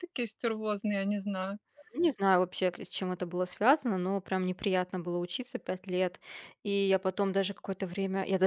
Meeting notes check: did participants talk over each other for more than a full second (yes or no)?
no